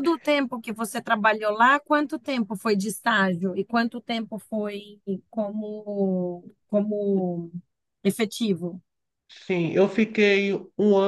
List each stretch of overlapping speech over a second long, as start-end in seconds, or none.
none